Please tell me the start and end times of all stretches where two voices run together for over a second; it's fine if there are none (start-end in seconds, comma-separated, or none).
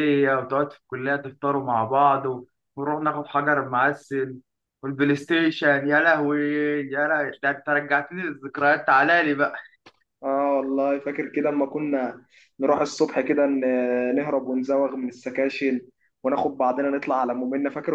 none